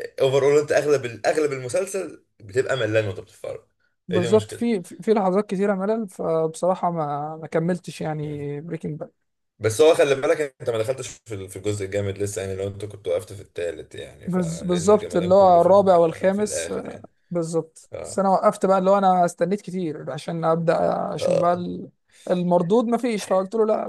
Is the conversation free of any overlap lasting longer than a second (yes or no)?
no